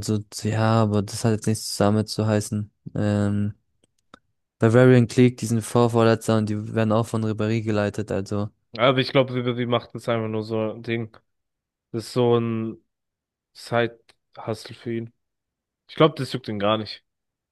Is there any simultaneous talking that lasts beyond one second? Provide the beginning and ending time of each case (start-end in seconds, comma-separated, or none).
none